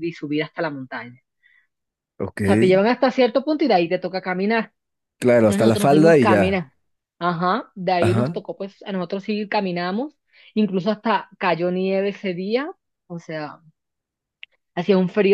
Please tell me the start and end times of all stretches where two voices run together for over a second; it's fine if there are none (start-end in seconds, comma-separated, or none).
5.4-6.6